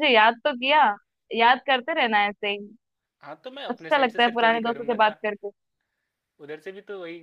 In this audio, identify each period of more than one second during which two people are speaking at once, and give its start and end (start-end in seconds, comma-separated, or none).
3.7-5.2